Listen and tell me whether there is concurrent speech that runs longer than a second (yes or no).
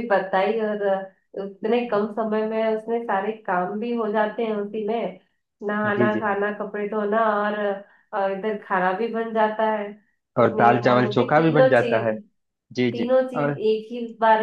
yes